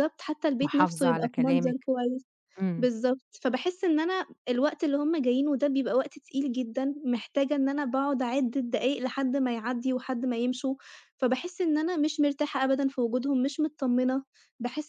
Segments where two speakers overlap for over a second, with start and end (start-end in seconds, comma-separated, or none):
0.6-1.9